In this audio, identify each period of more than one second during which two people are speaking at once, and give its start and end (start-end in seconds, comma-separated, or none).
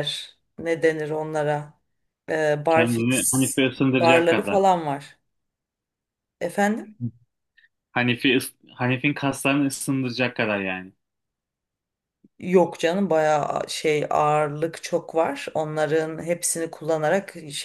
2.7-4.6